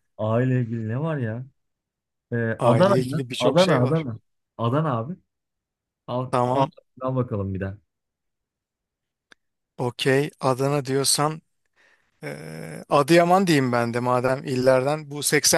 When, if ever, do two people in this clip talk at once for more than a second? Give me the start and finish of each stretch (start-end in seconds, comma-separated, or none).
2.6-4.0